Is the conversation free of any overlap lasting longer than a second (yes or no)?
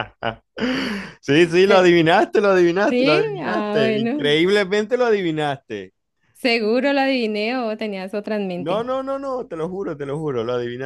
no